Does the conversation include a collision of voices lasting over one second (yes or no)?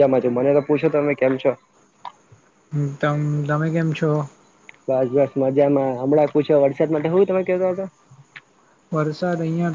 no